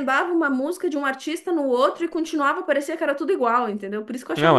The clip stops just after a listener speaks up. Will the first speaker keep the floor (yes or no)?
no